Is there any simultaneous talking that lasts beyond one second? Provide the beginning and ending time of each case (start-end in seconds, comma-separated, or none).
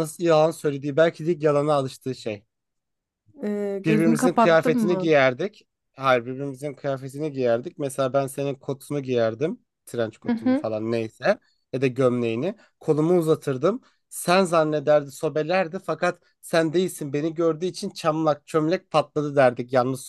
3.8-5.1